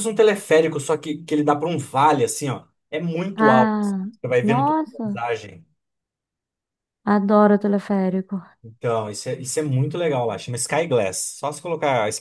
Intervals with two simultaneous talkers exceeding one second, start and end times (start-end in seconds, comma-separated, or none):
3.4-5.2